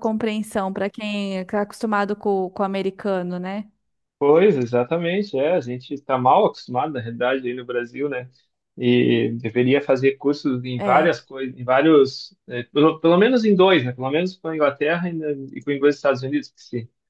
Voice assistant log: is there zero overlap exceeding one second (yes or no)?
yes